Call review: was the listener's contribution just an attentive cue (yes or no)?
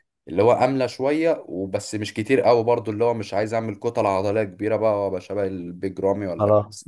no